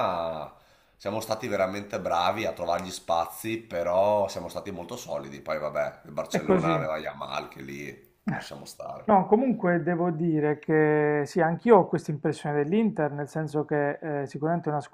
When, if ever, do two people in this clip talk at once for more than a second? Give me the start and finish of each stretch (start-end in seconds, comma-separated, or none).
none